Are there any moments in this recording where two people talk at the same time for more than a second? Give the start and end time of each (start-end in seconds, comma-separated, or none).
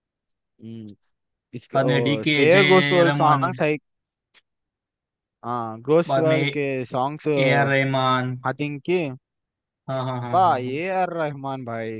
1.7-3.5